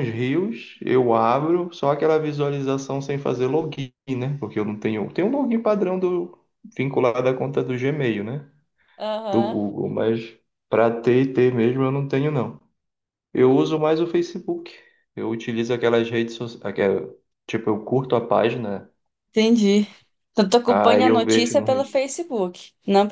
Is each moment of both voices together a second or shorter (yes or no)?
no